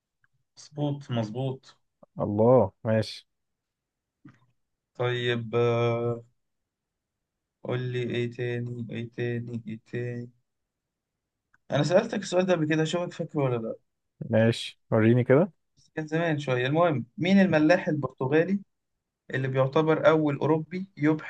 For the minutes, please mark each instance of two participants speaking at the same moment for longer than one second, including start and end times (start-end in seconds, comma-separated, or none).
none